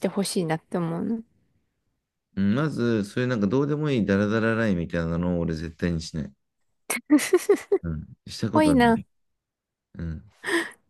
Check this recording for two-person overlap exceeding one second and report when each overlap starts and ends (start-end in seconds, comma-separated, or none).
none